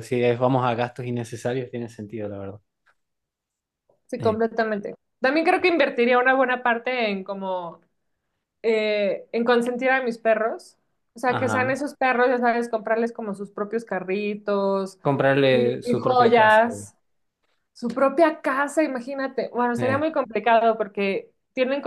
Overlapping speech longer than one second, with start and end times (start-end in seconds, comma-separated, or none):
15.5-16.7